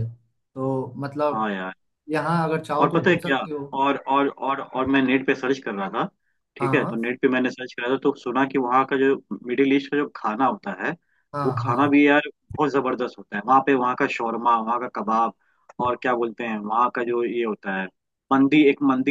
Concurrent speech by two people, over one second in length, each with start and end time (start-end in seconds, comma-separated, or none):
none